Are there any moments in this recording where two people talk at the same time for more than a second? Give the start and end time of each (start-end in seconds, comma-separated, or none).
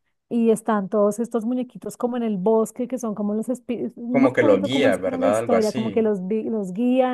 4.1-6.1